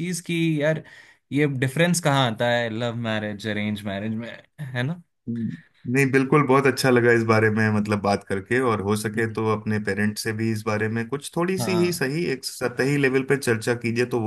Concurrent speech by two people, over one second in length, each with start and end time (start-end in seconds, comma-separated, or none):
none